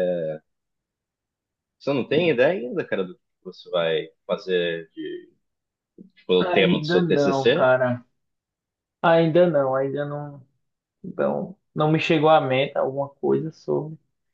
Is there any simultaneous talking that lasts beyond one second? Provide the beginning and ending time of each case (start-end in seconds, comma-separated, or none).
6.4-7.7